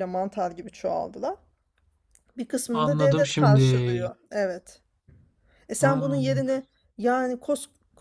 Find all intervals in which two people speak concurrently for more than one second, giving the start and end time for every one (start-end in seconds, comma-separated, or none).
2.7-4.1